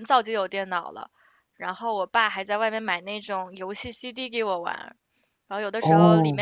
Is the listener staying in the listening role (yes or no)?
yes